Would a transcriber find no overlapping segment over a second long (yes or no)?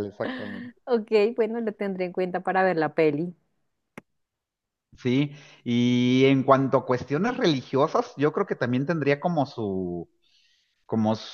yes